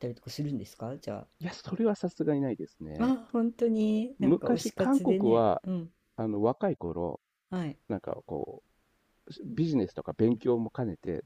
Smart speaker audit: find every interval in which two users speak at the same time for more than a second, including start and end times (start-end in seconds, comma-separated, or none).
4.2-5.6